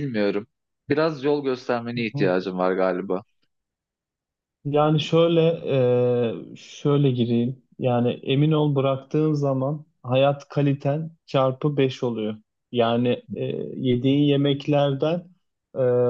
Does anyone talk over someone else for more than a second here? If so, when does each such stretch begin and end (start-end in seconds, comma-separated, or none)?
none